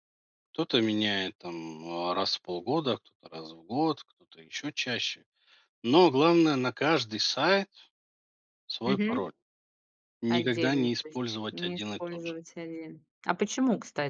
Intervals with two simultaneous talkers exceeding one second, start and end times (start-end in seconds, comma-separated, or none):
10.3-12.4